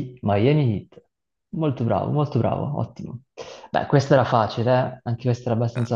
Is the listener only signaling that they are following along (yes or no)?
no